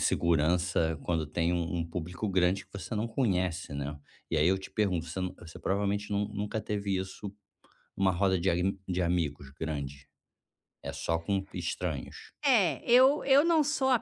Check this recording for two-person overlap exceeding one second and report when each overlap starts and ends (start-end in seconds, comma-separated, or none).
none